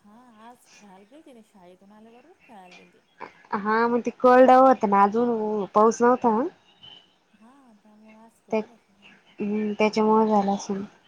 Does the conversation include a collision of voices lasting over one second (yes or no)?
no